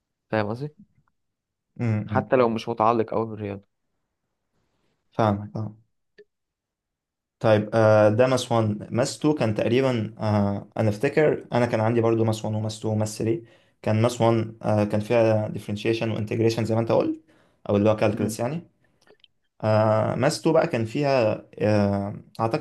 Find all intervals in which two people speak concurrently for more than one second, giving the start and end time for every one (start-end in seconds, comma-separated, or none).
none